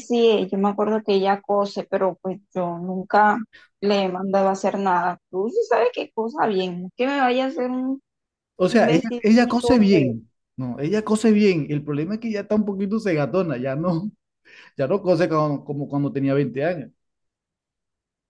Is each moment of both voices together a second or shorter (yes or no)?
no